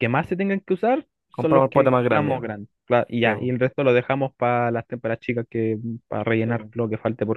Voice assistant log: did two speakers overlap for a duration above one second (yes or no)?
yes